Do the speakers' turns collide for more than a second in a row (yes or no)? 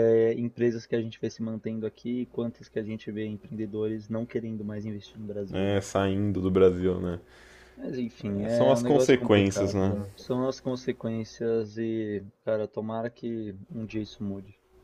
yes